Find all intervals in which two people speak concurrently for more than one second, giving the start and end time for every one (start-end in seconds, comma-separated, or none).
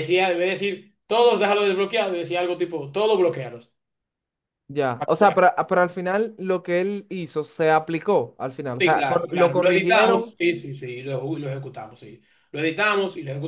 8.8-10.3